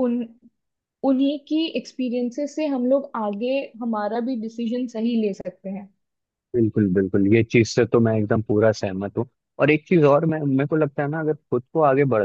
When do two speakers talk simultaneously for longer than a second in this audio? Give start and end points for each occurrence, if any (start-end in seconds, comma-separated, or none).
none